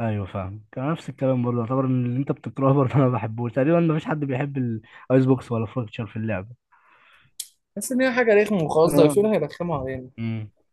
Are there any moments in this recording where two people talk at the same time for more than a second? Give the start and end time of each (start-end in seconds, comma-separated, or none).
none